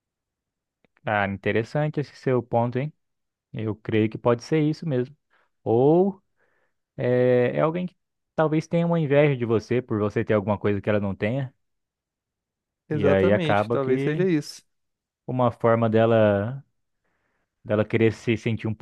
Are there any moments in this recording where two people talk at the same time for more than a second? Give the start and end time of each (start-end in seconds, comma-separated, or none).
12.9-14.3